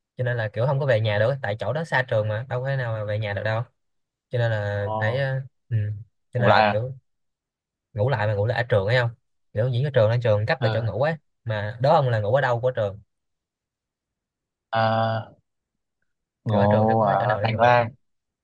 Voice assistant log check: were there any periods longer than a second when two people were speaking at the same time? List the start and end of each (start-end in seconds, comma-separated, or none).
16.5-17.8